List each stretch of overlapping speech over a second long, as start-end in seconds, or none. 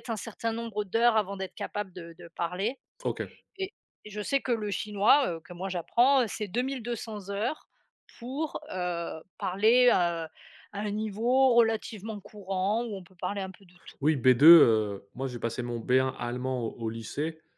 none